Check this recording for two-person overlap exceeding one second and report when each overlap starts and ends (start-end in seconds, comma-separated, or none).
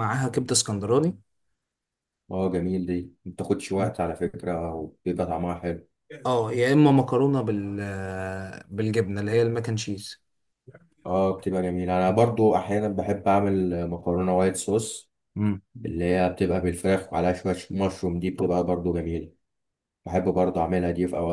none